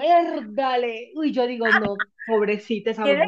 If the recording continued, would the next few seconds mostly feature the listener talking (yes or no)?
yes